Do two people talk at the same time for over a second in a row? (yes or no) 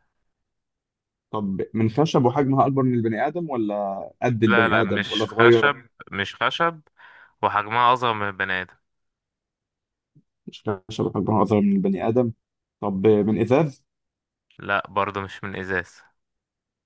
yes